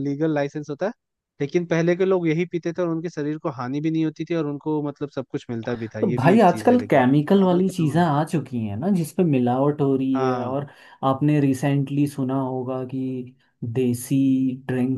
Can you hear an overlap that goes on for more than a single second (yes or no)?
yes